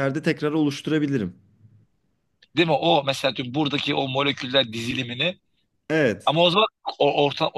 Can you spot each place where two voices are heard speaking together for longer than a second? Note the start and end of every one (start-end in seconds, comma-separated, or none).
none